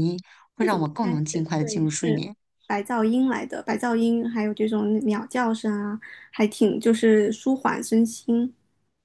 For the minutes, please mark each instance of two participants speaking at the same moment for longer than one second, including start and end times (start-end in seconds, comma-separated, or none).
0.6-2.2